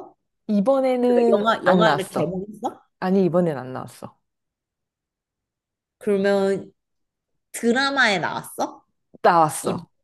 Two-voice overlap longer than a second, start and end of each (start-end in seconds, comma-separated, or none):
1.1-2.4